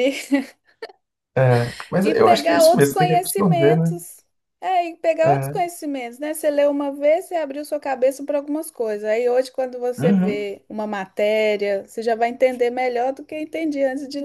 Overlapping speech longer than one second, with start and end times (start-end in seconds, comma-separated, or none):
2.0-4.0